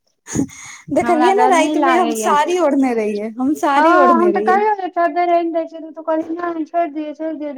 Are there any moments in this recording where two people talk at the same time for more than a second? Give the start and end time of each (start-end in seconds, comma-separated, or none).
1.0-2.3